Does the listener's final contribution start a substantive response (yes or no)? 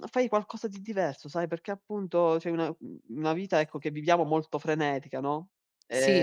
yes